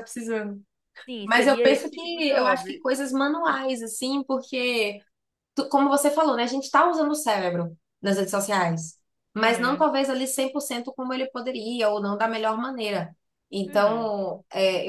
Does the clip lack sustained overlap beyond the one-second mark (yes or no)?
no